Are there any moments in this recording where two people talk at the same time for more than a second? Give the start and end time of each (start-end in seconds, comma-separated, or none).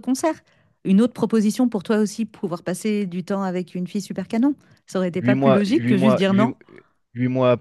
5.2-6.5